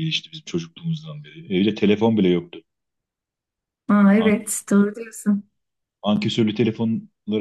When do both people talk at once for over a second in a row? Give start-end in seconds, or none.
none